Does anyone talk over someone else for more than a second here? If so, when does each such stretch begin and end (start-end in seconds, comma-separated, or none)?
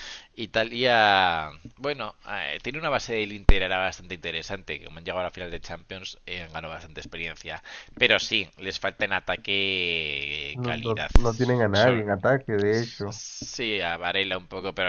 none